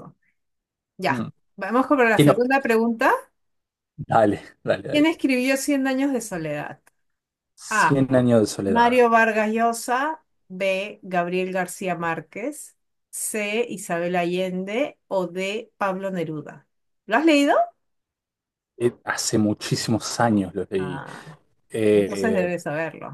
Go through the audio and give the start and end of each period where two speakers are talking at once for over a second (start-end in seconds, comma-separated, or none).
none